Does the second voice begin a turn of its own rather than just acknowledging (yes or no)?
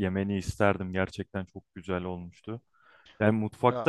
no